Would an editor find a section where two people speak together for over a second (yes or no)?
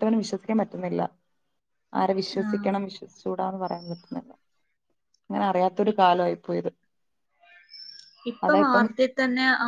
no